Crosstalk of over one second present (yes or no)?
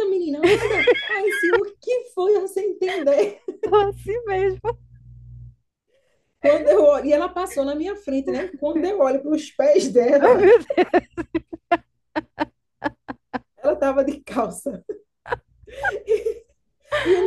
no